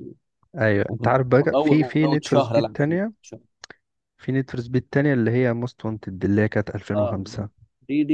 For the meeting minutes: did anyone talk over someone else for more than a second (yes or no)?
yes